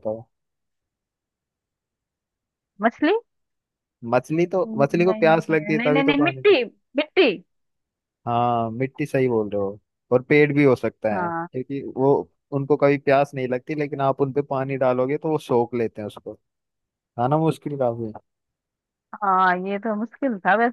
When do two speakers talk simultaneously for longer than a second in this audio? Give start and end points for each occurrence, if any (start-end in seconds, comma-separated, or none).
4.7-6.6